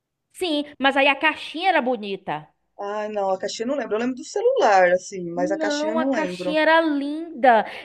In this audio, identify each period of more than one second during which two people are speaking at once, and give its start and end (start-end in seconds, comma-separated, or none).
5.3-6.6